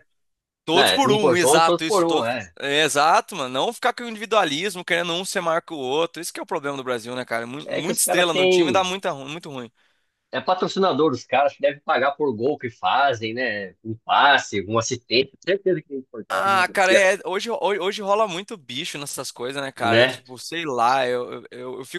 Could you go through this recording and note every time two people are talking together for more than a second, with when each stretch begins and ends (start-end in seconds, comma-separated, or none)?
0.7-2.5, 7.7-8.9